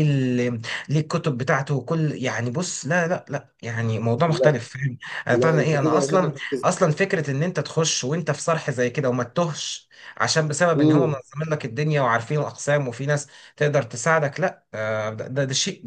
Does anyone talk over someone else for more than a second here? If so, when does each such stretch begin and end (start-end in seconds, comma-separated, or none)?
5.3-6.7